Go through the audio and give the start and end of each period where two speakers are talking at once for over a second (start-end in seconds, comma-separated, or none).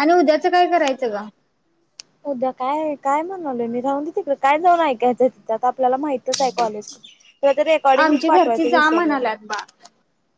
8.0-9.2